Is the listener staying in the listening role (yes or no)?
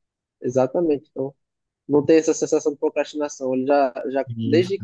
yes